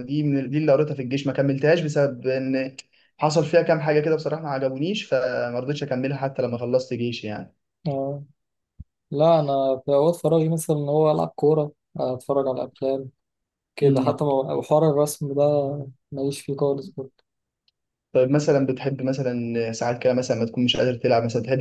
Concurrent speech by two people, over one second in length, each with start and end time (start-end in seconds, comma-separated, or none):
none